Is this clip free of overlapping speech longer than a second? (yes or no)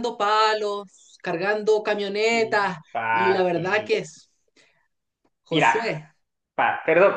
no